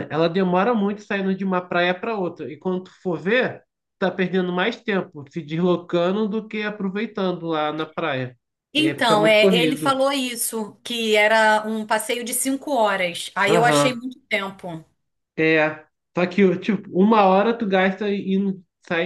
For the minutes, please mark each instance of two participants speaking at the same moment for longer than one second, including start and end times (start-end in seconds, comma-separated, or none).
8.8-10.0